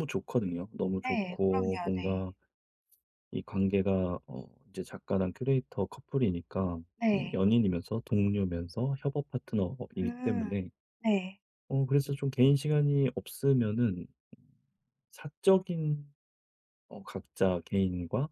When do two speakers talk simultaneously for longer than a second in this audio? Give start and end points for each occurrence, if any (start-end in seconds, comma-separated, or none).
1.0-2.3